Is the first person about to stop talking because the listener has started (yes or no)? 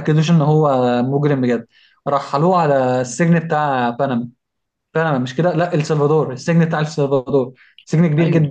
no